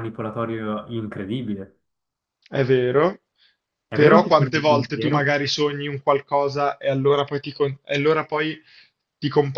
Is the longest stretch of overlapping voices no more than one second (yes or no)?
no